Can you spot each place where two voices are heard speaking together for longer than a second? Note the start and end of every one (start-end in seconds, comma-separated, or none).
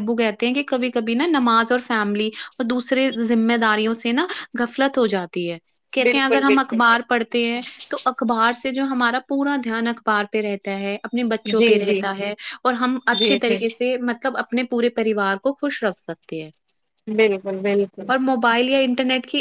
6.0-7.4